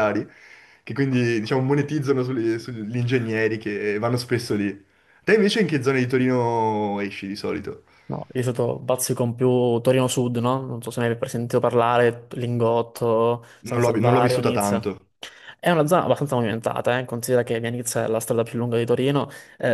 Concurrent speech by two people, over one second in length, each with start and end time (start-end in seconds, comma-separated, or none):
13.7-15.0